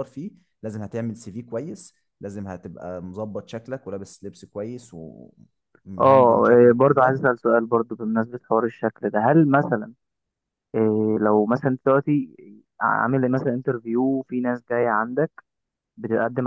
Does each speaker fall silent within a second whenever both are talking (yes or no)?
no